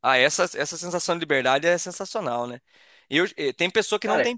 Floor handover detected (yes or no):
no